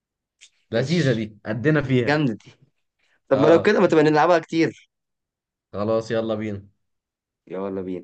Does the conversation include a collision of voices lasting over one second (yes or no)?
no